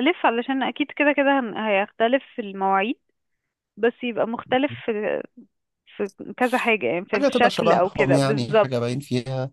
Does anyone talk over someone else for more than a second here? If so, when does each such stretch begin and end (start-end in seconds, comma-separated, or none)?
7.1-8.7